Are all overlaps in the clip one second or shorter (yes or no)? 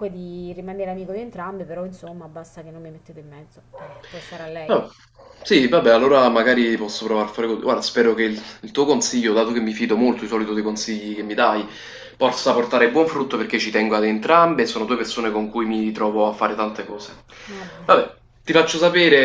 yes